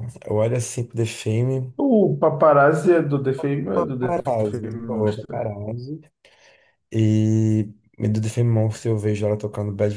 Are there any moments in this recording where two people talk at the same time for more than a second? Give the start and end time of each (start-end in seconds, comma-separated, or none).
3.7-5.5